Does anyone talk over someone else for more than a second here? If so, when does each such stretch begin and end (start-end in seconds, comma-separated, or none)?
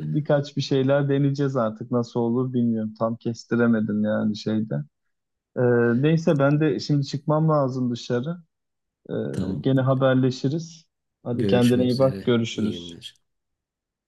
11.3-13.0